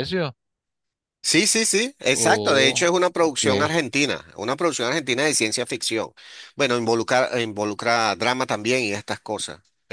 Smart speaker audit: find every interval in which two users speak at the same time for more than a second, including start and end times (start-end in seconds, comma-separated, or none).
2.1-3.4